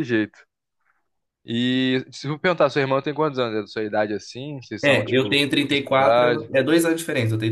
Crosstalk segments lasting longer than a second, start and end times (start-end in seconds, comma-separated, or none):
4.8-6.5